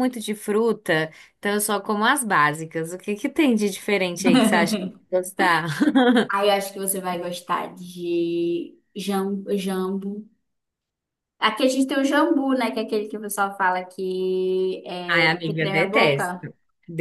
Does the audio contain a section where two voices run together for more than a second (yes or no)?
yes